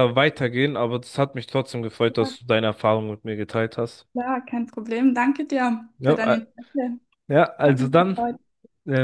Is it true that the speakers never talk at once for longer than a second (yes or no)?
yes